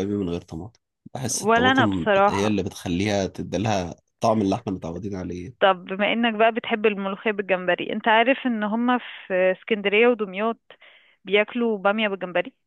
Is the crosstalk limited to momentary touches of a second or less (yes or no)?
no